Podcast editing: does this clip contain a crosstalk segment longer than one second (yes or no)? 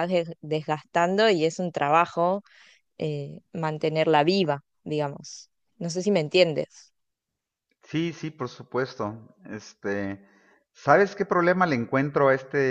no